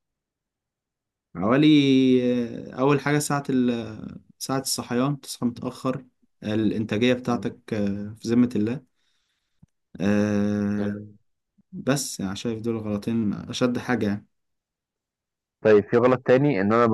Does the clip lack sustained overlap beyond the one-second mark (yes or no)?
yes